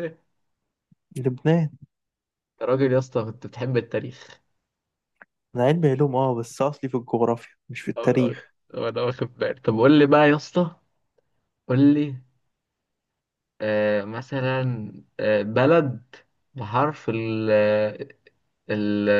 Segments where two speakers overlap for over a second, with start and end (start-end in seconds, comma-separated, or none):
none